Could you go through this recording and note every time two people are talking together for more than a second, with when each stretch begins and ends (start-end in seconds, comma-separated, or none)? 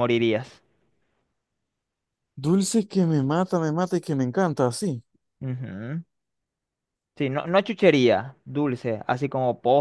none